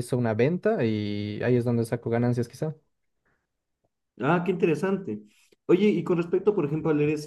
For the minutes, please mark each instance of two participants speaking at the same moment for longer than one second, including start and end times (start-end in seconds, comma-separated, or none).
none